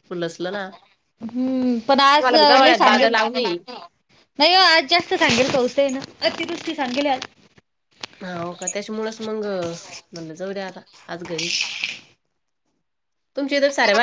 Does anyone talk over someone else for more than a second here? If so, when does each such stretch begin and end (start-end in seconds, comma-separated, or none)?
2.2-3.6